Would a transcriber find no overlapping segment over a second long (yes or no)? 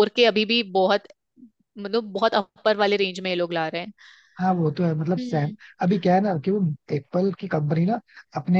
yes